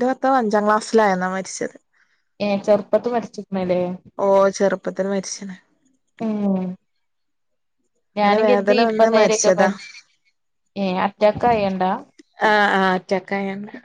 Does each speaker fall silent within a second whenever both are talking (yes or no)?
no